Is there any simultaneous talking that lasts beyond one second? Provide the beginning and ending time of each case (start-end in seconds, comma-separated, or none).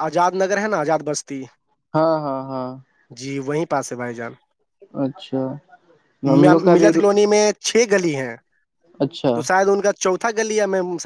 none